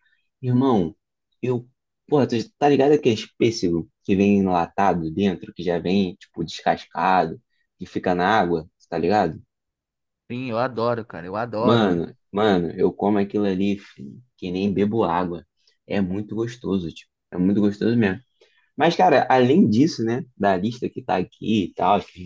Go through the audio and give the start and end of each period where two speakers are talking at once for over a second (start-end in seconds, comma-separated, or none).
none